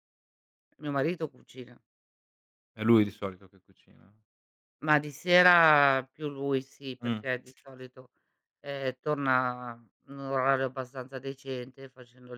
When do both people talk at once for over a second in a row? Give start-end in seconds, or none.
none